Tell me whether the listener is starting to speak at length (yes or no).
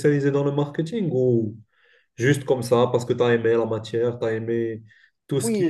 yes